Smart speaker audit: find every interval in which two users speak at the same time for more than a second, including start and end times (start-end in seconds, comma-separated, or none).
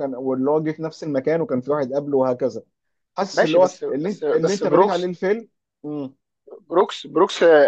3.3-5.1